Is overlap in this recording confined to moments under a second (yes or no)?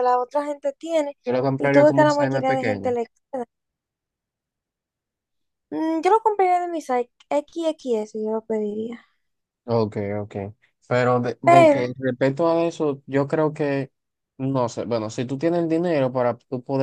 no